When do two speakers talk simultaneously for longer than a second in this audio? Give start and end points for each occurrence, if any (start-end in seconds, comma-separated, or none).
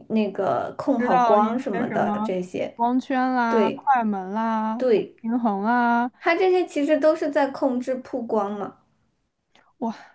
1.0-2.3